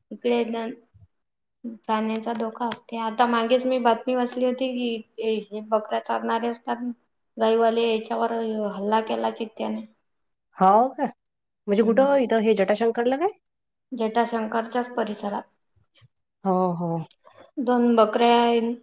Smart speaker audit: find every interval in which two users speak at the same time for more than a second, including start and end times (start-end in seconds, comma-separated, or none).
none